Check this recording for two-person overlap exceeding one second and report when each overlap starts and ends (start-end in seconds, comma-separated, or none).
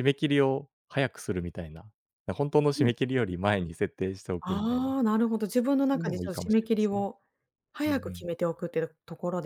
5.8-7.1